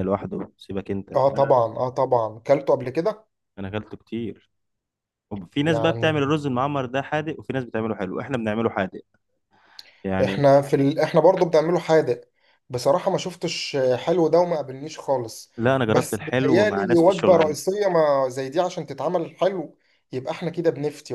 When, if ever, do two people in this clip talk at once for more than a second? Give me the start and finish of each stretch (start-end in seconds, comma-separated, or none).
15.9-17.6